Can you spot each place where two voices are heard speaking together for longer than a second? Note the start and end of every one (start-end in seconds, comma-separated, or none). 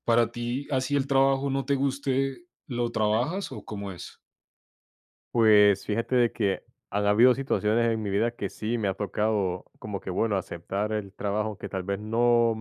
none